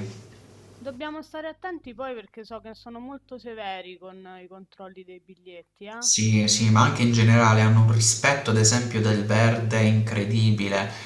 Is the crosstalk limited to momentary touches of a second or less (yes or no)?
yes